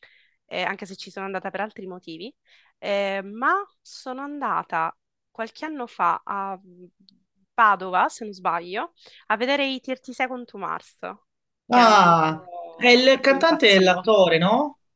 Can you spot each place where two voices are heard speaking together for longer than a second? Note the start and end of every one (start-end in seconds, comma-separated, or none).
11.7-14.1